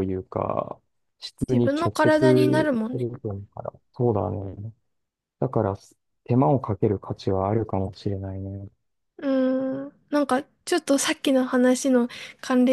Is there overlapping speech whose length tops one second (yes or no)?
yes